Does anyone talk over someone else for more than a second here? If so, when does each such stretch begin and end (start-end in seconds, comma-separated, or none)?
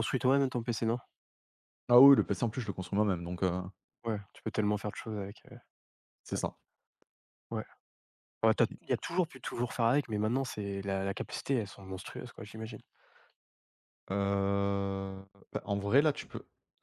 none